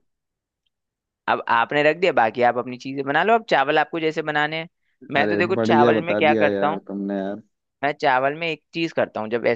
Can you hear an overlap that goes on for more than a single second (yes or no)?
yes